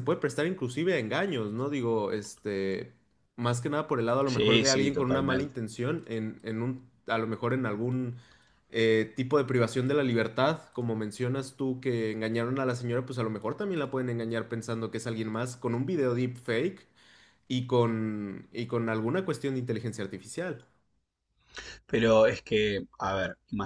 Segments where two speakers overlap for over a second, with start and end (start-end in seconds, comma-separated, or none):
4.2-5.5